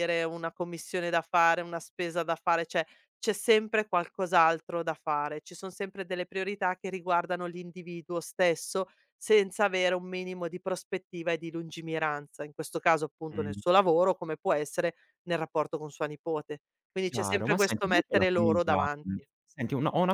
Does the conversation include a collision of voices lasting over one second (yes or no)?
yes